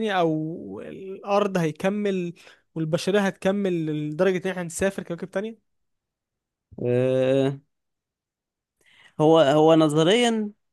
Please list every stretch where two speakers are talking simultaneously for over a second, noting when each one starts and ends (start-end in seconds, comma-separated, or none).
none